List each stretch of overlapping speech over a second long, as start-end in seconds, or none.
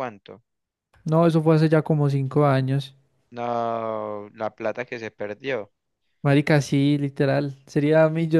none